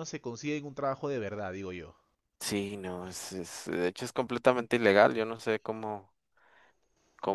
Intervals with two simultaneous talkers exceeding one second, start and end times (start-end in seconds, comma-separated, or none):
none